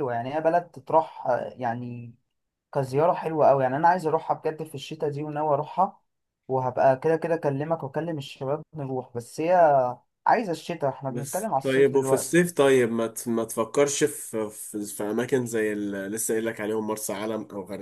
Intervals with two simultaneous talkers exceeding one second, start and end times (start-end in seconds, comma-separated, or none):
11.1-12.3